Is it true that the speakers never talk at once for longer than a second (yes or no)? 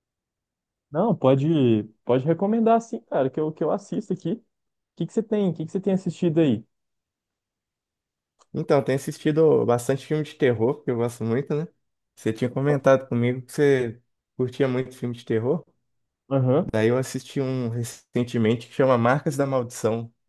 yes